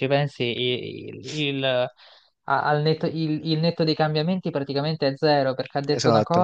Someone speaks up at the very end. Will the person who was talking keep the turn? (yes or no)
yes